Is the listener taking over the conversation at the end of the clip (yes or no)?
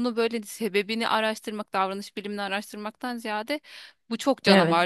no